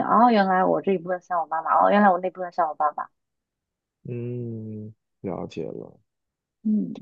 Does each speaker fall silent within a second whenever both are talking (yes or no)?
yes